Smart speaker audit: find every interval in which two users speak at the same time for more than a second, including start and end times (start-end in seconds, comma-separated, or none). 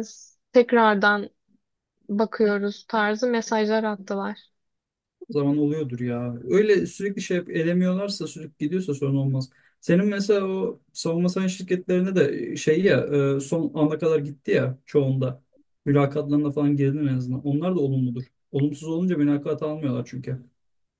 none